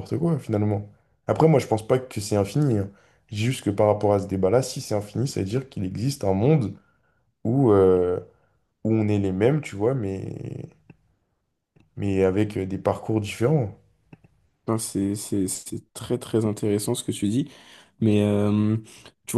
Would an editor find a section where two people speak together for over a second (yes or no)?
no